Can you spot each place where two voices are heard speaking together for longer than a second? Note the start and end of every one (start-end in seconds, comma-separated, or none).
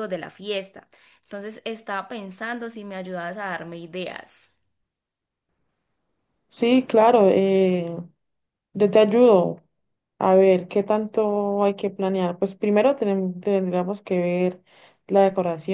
none